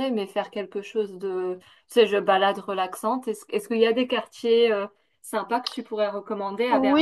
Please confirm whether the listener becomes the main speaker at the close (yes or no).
yes